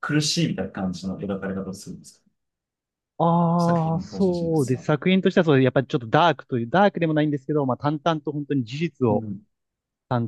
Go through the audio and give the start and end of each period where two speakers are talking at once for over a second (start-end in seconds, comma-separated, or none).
3.6-4.9